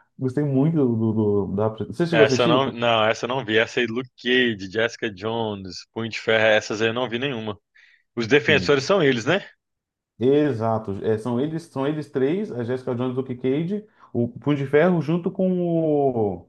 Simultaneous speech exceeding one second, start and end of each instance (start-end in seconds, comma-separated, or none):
none